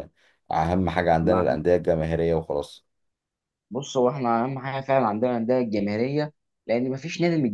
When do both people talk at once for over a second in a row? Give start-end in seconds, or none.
none